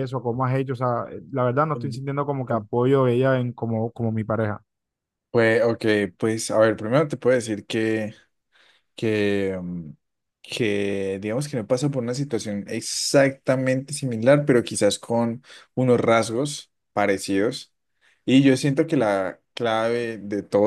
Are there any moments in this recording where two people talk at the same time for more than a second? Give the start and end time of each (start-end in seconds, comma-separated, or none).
none